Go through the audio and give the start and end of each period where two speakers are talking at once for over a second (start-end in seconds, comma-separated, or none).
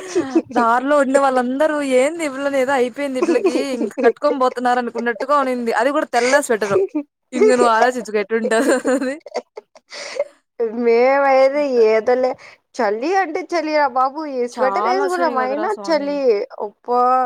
14.6-16.1